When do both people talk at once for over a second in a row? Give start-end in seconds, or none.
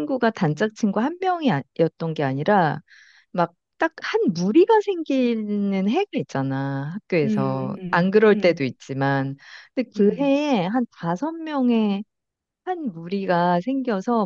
7.2-8.6